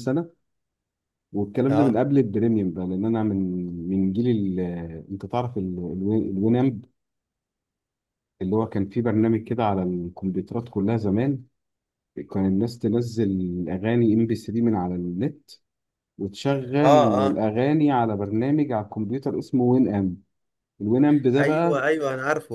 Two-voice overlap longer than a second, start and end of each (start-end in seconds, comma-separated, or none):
none